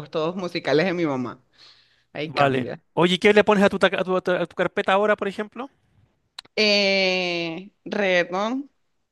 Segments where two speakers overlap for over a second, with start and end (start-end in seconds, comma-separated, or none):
none